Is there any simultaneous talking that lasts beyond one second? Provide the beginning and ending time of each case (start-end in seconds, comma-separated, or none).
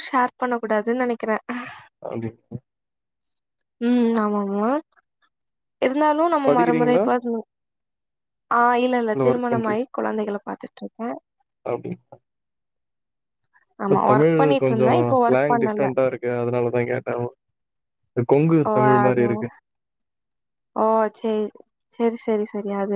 13.9-15.9